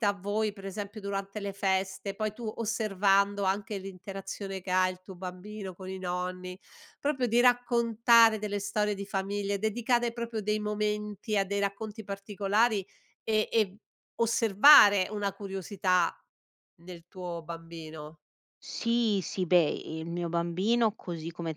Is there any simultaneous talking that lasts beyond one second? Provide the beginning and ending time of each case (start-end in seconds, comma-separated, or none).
none